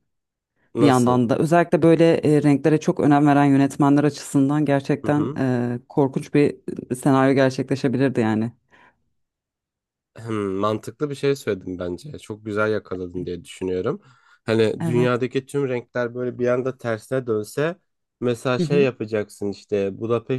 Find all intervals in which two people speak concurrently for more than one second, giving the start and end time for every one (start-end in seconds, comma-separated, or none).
none